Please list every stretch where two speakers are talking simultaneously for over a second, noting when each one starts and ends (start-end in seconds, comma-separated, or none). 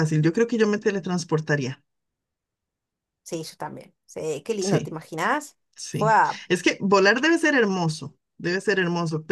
none